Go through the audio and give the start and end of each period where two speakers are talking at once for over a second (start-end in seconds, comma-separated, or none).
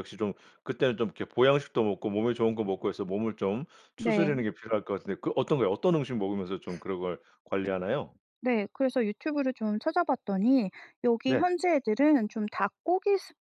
none